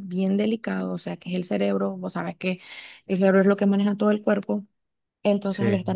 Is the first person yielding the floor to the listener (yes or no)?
no